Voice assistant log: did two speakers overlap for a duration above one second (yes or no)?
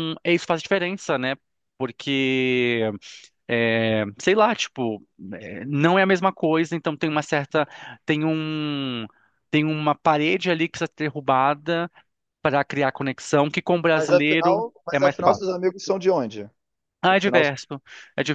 yes